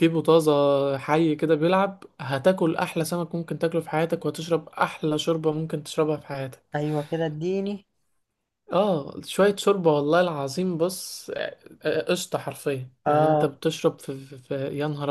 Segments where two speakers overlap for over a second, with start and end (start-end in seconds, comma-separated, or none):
none